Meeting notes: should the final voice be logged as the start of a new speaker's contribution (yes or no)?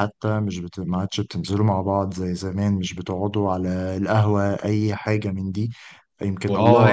no